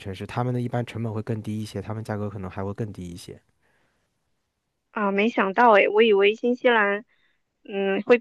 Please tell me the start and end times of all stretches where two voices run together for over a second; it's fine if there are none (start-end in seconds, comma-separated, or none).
none